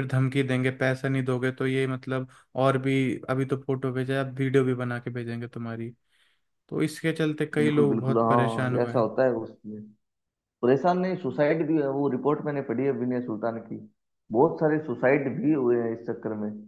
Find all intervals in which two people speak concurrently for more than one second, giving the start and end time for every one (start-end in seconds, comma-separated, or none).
7.6-9.1